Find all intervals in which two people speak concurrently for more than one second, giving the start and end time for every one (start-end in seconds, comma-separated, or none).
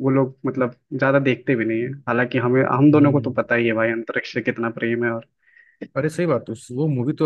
none